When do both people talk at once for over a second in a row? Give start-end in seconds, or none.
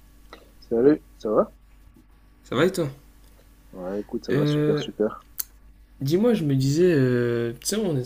none